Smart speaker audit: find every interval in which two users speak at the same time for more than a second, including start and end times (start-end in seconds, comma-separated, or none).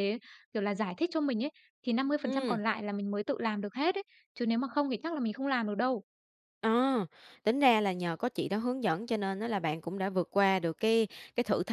none